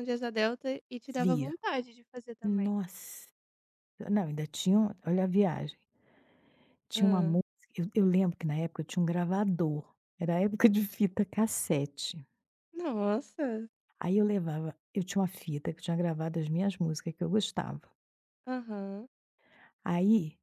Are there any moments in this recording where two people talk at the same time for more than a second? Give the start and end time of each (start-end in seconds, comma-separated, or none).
none